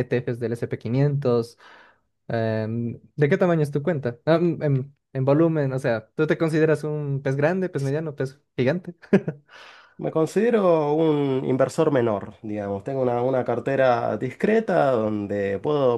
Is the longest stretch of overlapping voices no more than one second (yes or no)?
yes